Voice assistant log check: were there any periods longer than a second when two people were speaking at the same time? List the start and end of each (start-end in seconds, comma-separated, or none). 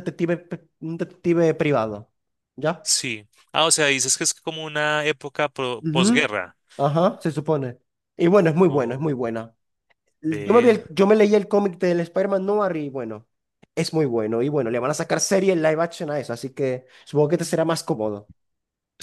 none